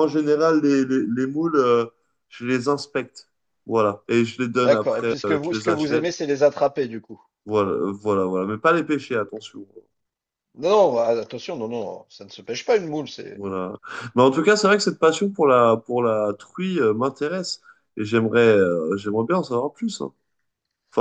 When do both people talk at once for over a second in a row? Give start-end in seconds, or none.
4.6-6.0